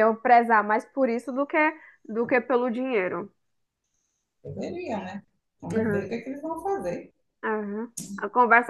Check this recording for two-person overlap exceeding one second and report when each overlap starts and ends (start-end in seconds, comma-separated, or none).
none